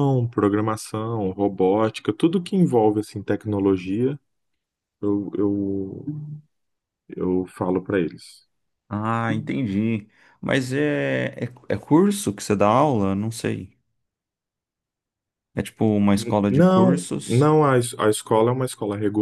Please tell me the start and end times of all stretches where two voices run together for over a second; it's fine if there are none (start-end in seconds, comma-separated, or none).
16.1-17.5